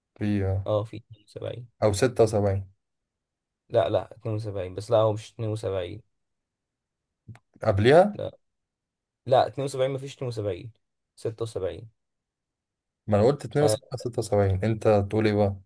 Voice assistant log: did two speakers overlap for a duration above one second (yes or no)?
no